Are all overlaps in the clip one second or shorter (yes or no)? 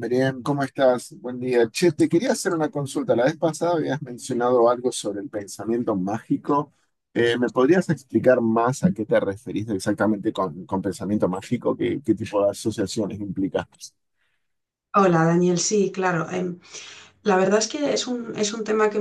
yes